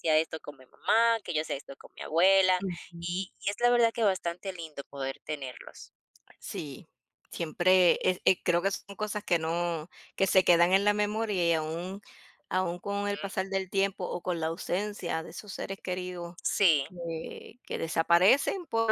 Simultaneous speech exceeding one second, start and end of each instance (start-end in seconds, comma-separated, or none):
none